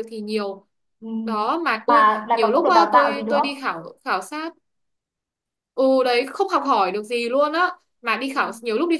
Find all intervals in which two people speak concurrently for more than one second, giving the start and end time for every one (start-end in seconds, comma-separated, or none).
1.9-3.5